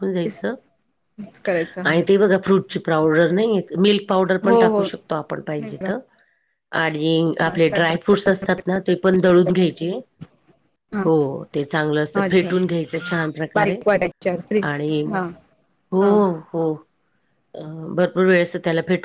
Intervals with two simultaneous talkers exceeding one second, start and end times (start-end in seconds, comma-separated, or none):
none